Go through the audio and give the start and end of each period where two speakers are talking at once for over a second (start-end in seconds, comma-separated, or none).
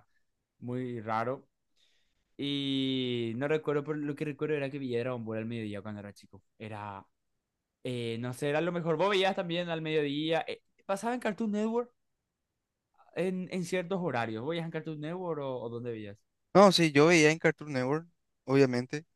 none